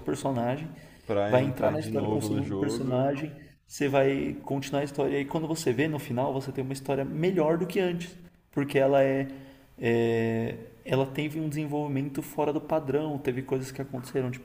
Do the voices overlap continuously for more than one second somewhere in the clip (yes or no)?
yes